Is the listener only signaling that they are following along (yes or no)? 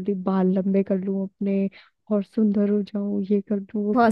no